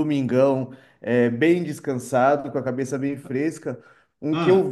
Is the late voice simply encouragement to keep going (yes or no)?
yes